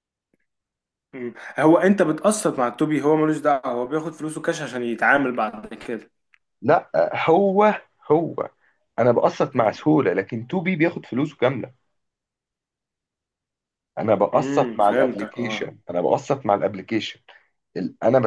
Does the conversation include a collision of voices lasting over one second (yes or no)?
yes